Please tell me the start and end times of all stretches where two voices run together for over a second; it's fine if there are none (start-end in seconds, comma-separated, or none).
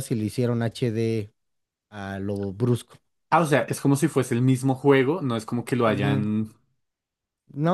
none